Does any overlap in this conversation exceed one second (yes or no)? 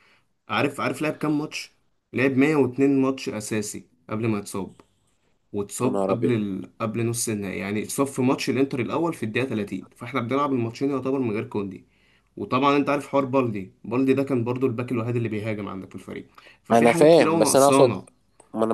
yes